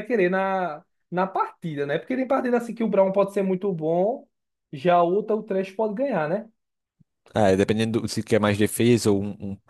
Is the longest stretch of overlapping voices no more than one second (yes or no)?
yes